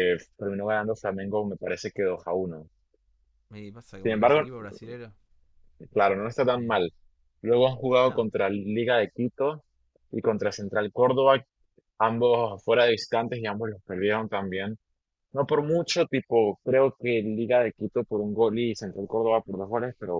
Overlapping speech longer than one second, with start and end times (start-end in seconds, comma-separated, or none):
none